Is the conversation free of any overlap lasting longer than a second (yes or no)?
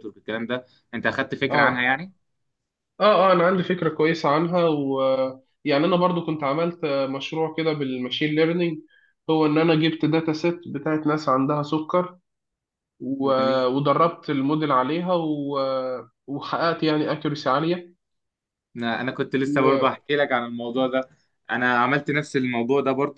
yes